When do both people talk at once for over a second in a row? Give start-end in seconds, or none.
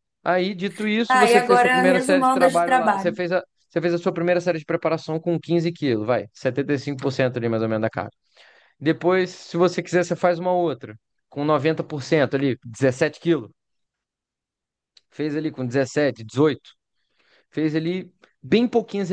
1.1-3.2